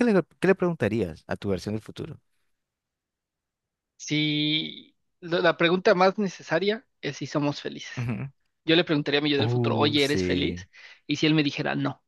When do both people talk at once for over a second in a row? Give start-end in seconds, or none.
9.4-10.7